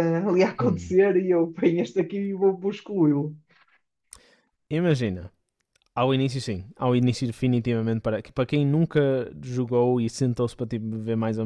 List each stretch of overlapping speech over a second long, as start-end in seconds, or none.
none